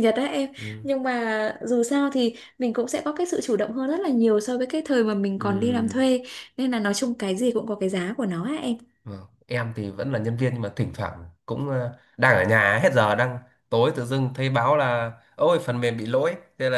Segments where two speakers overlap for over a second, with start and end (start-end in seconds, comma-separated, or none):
none